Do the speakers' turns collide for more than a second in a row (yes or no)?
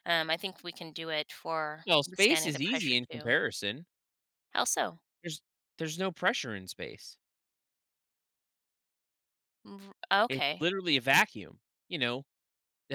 yes